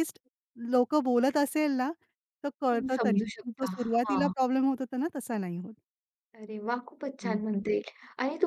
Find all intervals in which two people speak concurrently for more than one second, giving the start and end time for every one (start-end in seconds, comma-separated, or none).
2.7-4.3